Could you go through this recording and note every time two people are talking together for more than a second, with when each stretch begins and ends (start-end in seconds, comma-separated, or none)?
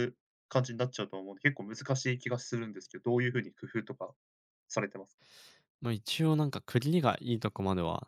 none